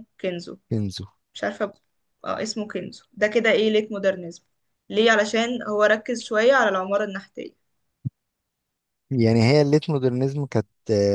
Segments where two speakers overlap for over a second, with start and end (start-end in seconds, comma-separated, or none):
none